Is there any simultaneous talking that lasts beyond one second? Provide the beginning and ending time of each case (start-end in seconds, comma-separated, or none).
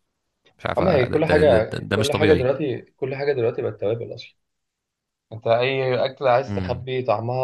0.8-2.5